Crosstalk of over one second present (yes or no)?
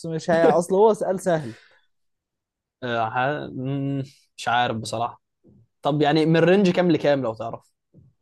no